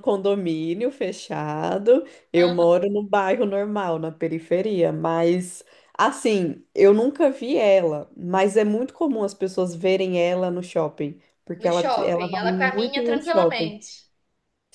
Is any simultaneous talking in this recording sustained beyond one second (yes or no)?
yes